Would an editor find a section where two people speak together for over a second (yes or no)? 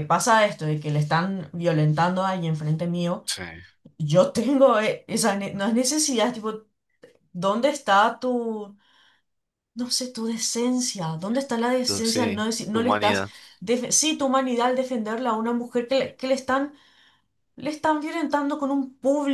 yes